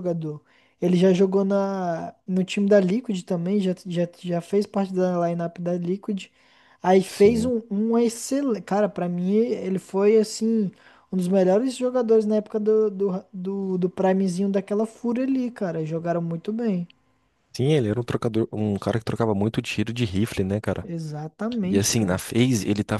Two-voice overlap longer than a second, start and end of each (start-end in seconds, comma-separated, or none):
none